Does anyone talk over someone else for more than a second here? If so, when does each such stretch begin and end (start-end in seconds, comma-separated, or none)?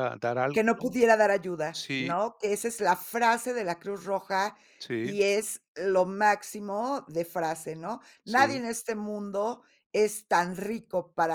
none